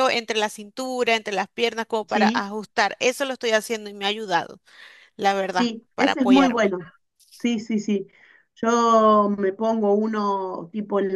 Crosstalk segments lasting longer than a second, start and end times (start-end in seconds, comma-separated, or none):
5.5-6.7